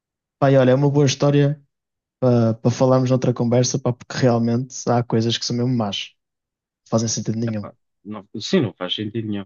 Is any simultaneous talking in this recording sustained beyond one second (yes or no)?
no